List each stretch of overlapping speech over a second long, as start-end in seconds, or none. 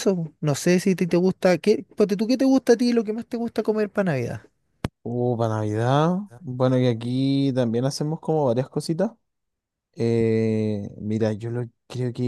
none